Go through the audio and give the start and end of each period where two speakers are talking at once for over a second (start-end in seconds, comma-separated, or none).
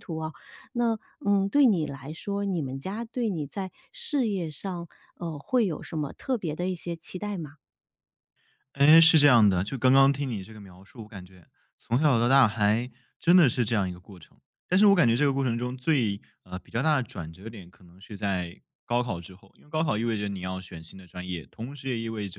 none